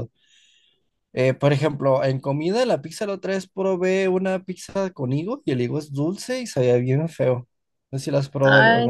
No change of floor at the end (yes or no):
no